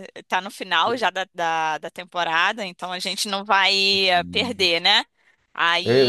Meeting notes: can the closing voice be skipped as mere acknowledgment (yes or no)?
no